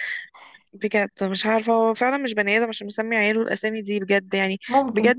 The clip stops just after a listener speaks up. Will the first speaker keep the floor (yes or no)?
yes